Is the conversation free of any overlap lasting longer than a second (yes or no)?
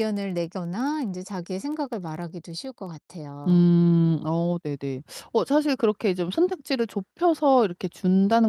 yes